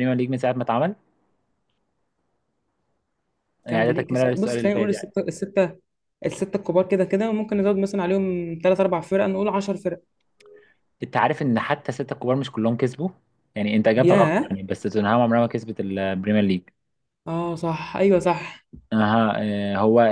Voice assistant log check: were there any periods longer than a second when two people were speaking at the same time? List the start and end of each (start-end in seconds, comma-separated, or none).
3.7-5.1